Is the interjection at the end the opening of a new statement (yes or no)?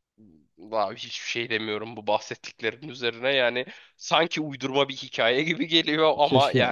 yes